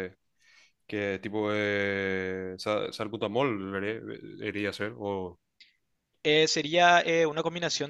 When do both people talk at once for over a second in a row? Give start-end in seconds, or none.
none